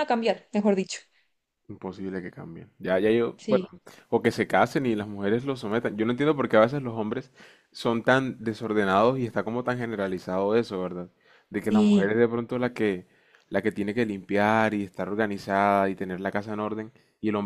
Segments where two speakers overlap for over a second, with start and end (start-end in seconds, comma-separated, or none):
none